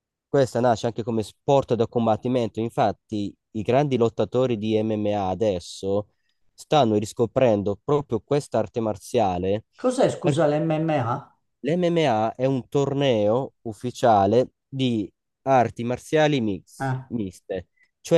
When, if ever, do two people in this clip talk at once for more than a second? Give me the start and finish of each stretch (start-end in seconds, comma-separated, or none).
none